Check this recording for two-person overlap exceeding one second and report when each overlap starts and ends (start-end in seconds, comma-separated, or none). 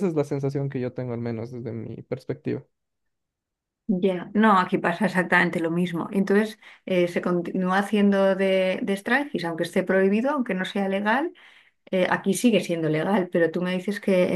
none